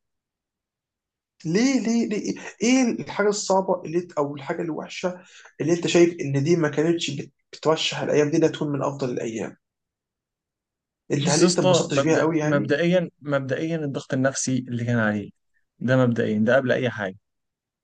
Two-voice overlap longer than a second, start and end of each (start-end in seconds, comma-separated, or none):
11.2-12.8